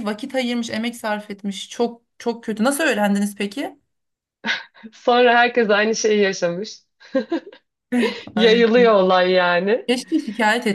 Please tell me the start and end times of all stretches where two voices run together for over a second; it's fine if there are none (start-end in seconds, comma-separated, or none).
none